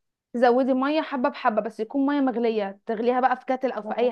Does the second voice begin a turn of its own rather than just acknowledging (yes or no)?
yes